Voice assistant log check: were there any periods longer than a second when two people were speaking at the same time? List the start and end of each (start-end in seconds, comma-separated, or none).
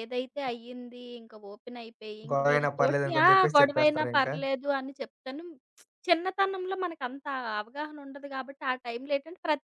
2.3-4.3